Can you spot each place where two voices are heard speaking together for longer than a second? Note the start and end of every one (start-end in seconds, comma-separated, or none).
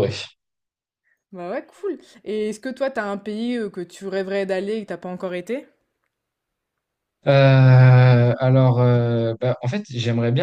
none